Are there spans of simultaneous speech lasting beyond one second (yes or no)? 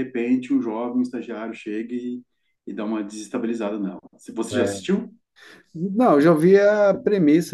no